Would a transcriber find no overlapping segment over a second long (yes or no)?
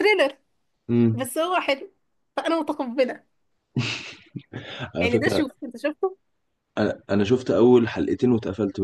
yes